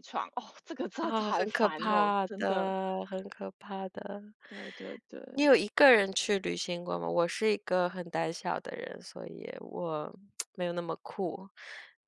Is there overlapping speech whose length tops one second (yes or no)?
yes